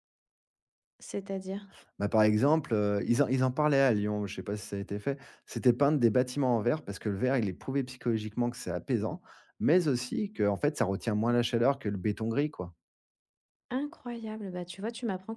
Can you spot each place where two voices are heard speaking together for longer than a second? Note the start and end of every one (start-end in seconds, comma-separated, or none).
none